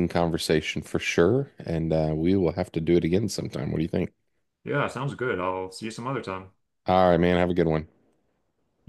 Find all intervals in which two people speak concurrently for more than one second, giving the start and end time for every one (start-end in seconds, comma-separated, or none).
none